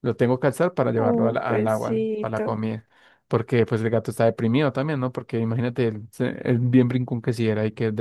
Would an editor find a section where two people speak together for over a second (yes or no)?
yes